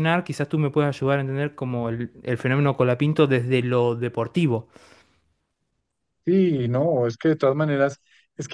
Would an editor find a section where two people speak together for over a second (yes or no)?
no